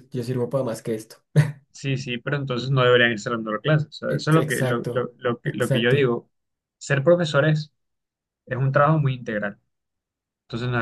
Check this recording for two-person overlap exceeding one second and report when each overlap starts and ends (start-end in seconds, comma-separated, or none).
4.1-6.1